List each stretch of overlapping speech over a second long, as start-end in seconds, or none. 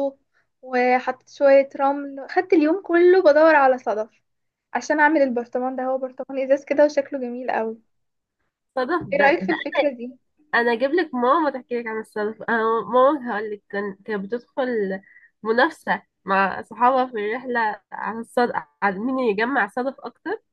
none